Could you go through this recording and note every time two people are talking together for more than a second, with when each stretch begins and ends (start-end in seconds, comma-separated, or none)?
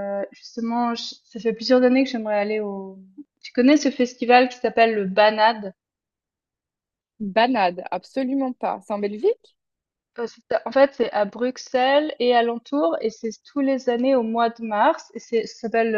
none